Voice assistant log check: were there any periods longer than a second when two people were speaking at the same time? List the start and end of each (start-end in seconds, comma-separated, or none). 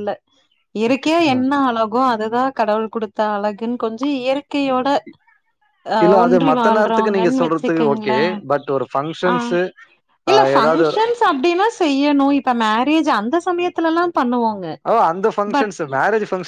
6.0-8.1